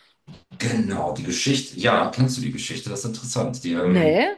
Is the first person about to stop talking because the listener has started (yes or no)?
no